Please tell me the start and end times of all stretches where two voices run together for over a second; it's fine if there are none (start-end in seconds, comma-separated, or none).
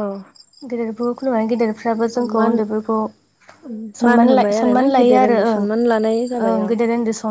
4.0-5.6